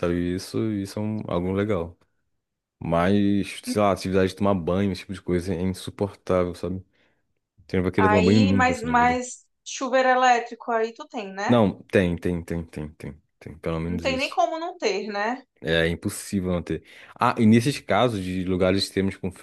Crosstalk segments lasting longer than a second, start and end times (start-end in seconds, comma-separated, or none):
8.0-9.2